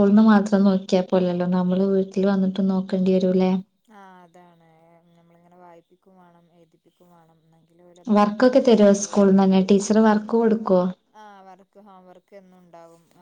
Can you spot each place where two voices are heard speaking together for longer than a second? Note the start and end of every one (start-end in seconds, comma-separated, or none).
none